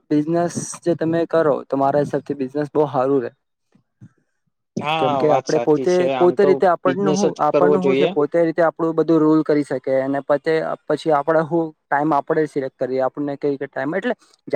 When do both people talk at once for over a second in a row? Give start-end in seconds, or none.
5.0-8.1